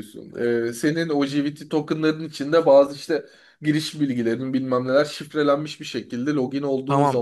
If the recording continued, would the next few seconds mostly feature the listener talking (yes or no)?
yes